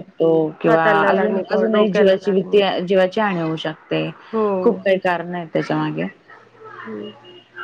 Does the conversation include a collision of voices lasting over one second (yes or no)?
yes